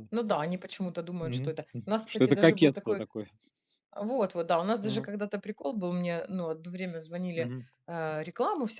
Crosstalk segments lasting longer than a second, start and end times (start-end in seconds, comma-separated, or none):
1.2-3.0